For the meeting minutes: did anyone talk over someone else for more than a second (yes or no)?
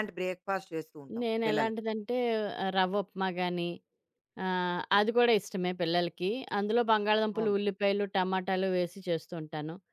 no